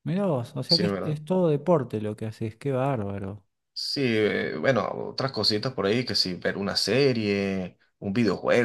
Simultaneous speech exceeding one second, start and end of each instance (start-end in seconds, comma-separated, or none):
none